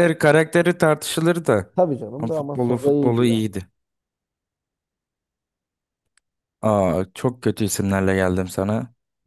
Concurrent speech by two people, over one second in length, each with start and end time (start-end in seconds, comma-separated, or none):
2.2-3.4